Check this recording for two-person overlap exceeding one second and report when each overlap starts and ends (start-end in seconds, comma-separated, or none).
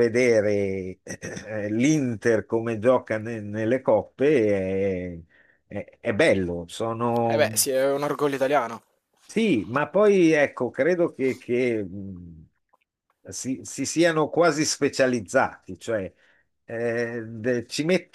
none